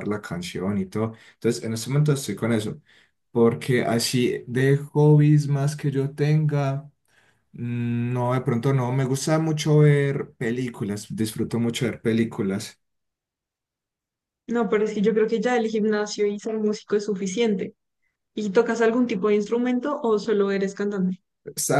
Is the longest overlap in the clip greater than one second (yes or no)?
no